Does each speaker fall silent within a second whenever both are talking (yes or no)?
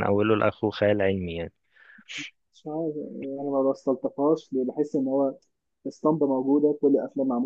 yes